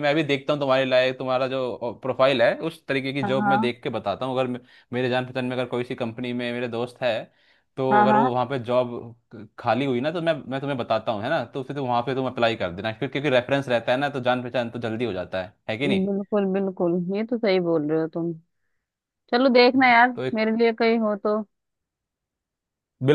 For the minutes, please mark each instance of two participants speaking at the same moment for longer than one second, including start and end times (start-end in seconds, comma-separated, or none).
none